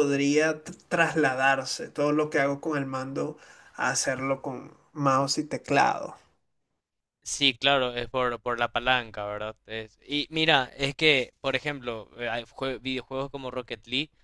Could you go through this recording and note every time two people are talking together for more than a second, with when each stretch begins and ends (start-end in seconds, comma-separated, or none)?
none